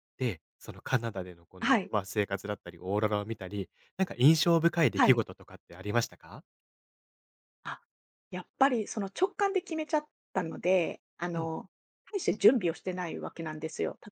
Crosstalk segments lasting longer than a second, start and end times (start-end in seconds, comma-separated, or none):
none